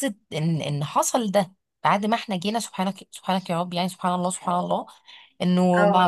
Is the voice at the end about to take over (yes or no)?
no